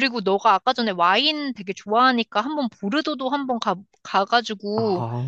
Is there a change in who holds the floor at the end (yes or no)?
no